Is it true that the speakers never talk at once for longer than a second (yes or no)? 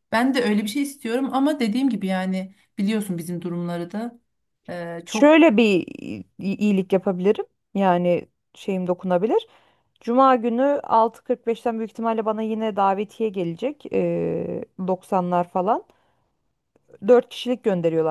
yes